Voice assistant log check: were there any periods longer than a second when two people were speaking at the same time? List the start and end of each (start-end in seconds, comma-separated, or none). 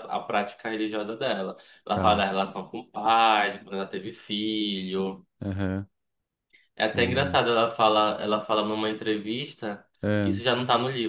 none